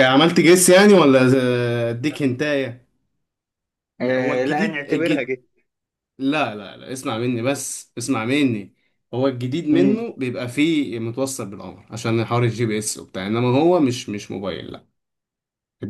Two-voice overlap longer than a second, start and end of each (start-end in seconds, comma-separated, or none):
4.0-5.3